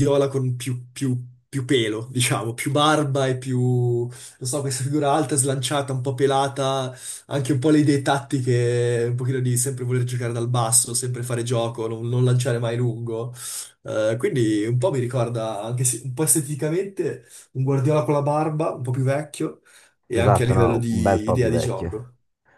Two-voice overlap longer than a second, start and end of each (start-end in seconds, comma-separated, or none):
20.1-22.1